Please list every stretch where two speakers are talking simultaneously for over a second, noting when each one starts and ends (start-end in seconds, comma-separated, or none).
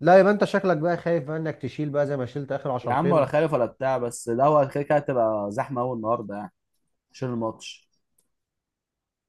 none